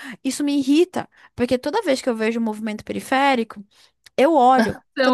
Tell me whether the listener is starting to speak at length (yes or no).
no